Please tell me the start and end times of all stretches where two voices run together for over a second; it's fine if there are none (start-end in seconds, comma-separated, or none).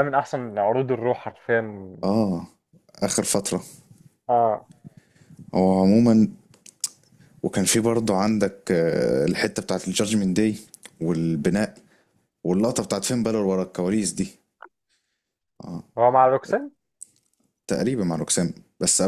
none